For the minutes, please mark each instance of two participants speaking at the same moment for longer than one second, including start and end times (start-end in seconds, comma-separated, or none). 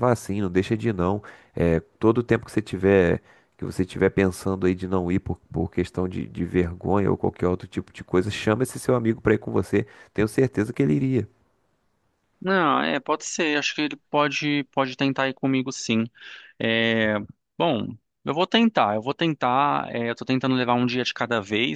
none